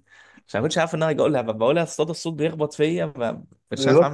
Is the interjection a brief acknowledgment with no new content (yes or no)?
no